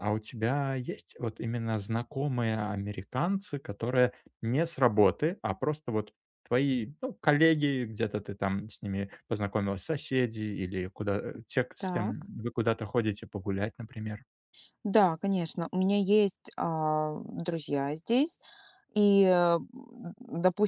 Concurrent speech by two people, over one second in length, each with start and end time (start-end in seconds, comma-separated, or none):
none